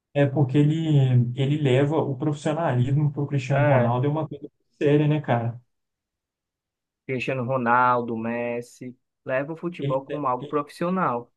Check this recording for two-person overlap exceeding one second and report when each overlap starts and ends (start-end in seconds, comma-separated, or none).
none